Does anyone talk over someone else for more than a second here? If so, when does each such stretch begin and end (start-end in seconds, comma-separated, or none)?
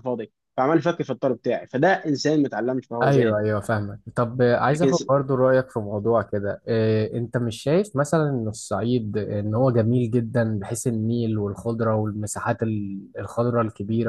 none